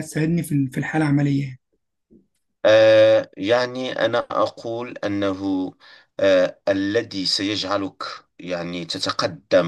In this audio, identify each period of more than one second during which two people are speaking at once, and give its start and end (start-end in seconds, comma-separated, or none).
none